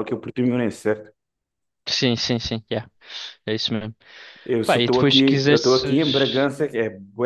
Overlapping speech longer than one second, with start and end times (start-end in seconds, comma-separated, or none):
4.6-6.5